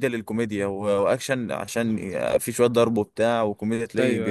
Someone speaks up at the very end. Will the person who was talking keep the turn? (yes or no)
yes